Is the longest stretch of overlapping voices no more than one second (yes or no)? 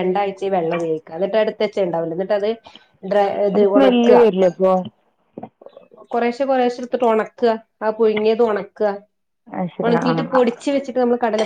yes